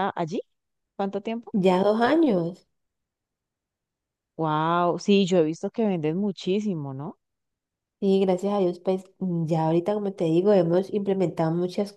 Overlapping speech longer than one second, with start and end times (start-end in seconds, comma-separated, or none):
none